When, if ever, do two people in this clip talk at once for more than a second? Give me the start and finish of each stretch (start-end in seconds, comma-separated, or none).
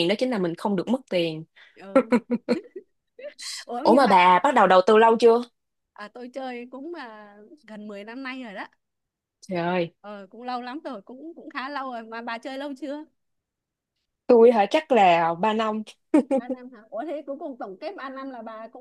none